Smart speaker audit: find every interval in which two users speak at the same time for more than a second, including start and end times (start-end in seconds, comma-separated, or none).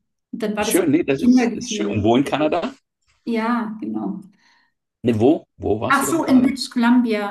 0.6-2.0